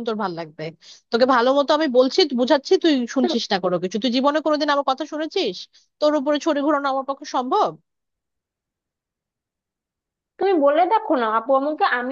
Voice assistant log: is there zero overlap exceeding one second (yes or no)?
yes